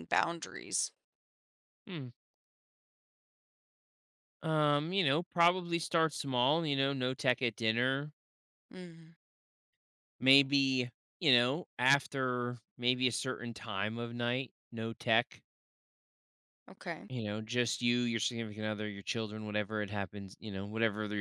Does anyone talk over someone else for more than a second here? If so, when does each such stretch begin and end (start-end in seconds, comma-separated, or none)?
none